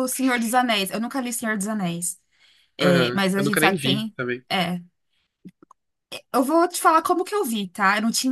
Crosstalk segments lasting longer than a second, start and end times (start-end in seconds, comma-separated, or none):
2.8-4.4